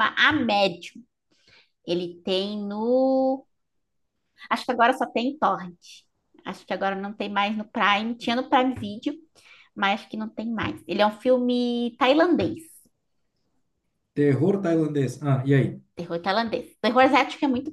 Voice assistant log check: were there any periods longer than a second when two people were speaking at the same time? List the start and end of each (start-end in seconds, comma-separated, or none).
none